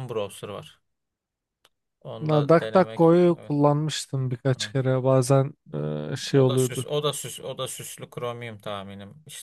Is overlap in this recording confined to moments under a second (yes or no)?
no